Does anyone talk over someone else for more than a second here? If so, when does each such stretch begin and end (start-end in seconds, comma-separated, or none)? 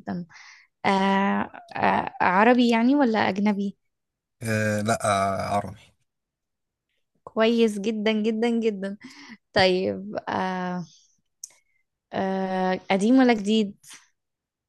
none